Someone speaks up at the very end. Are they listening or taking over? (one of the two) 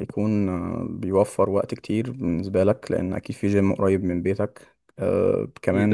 listening